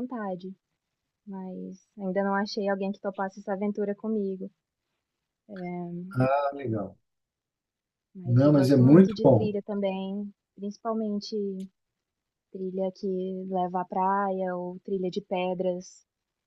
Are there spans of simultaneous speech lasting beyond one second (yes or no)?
yes